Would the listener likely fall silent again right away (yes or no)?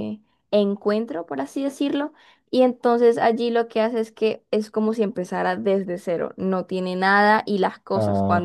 yes